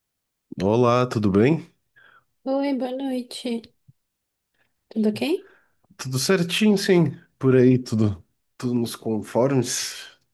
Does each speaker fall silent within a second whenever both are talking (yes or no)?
yes